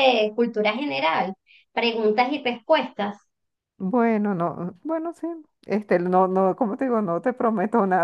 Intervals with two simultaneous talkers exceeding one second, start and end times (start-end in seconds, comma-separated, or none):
none